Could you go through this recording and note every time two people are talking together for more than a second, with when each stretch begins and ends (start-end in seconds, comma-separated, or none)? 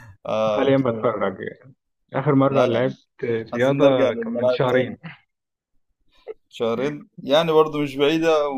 3.5-4.9